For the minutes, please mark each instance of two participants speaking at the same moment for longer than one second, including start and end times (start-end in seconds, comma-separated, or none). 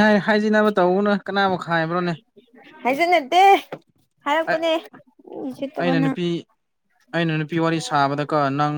none